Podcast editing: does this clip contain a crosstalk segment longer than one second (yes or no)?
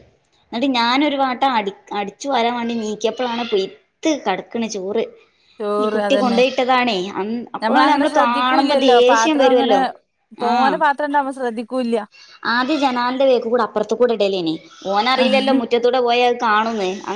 yes